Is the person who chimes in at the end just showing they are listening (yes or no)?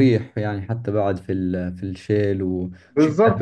no